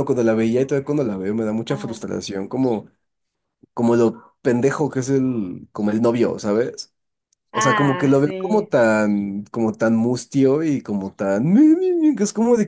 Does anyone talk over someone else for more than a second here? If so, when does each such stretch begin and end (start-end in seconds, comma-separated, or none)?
7.5-8.7